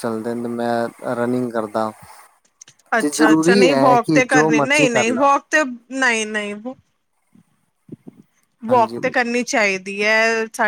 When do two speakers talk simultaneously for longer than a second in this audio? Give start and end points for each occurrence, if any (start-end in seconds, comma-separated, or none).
3.0-5.3